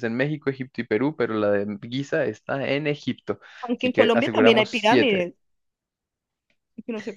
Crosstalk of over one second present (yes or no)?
yes